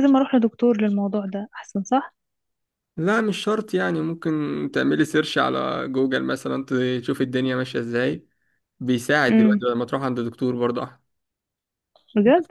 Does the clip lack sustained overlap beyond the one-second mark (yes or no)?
yes